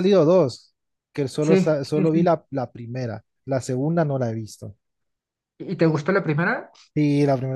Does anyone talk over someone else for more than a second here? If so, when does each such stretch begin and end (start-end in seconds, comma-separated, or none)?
none